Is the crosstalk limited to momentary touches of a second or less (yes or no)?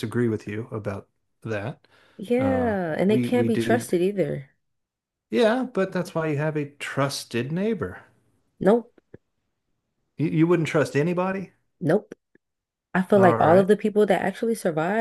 no